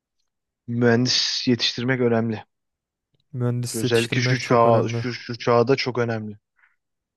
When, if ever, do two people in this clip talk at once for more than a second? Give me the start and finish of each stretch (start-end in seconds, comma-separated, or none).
3.7-5.0